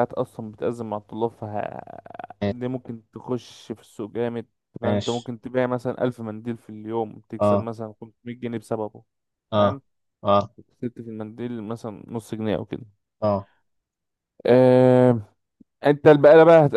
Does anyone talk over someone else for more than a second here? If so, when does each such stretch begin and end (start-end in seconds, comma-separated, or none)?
none